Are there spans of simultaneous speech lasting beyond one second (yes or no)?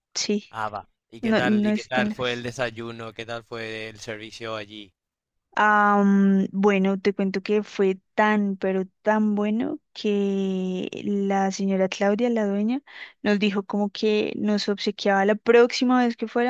yes